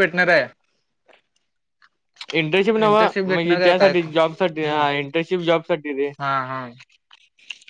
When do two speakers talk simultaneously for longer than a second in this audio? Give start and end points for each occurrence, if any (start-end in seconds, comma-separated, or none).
3.3-4.8